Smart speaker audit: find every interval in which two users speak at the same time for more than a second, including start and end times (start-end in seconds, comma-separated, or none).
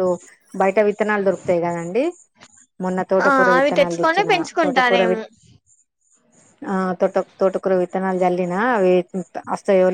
3.2-5.2